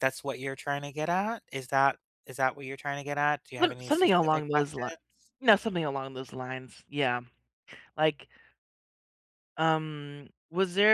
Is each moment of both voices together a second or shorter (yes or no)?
no